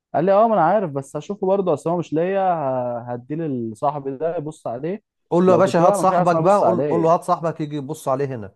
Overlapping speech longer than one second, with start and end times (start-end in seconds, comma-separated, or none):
5.5-7.1